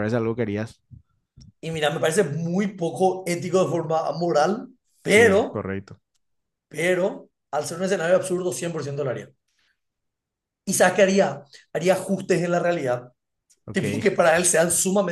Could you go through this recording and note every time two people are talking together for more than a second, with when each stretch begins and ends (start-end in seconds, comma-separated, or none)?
none